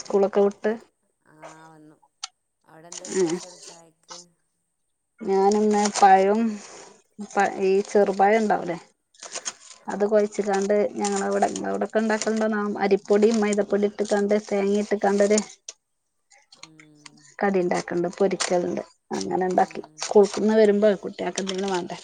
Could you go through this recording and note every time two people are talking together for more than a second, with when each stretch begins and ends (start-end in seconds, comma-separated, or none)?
none